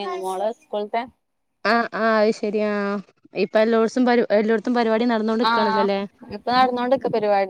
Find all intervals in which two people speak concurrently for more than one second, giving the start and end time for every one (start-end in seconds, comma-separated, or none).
none